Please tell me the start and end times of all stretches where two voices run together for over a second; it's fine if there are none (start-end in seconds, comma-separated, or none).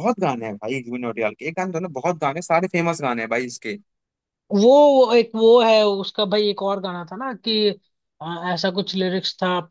none